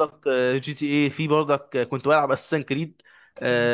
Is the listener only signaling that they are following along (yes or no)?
yes